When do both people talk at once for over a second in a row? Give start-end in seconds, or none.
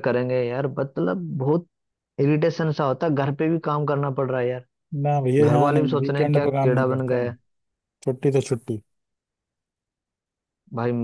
5.4-7.0